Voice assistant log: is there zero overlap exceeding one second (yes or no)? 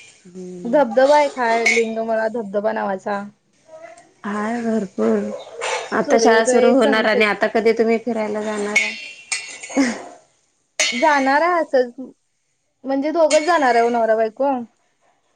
no